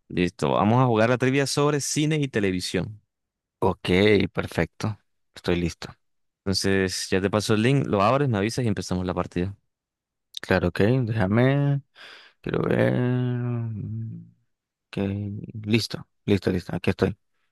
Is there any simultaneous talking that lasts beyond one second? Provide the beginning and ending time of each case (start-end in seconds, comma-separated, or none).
none